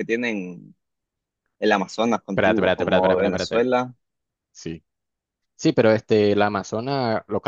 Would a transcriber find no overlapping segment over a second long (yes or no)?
no